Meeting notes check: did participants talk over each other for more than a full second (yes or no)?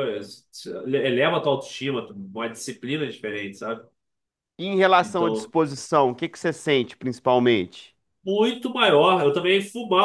no